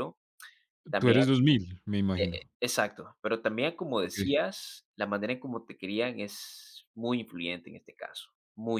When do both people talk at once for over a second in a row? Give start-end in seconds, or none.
none